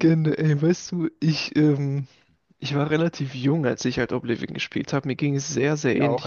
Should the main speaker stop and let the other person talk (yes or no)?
no